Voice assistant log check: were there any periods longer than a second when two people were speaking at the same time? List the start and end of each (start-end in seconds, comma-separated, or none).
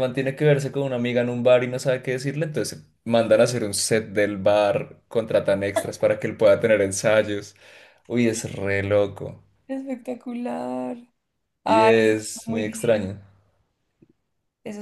11.7-13.1